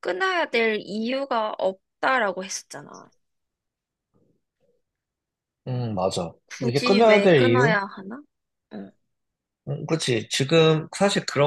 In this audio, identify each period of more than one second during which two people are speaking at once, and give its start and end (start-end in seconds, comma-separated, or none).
6.5-7.8